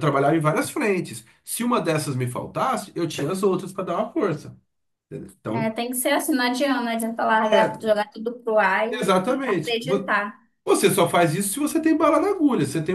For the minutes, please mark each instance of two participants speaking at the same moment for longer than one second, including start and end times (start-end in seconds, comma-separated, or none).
8.9-10.1